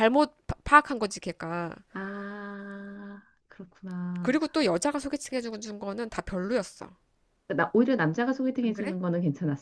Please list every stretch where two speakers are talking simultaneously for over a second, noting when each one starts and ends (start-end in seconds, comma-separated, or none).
none